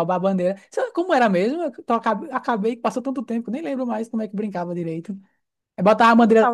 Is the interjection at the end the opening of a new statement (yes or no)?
no